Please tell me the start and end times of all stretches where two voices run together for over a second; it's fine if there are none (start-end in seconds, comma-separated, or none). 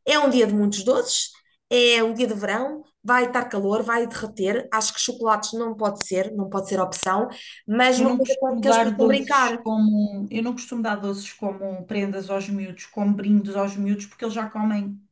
8.0-9.6